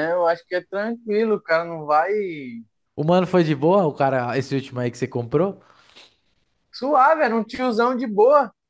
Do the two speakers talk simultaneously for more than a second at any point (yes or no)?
no